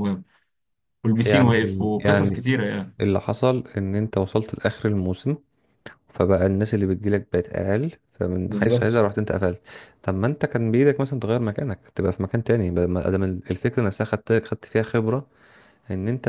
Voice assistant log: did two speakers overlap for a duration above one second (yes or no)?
yes